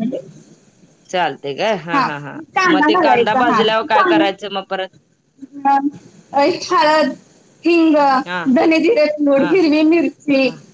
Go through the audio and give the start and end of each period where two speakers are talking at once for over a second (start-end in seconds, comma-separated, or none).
none